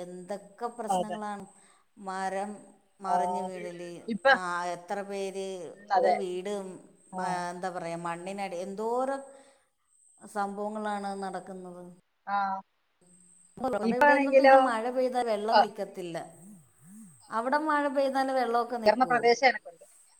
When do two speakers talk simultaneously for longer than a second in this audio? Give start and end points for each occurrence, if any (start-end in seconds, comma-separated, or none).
none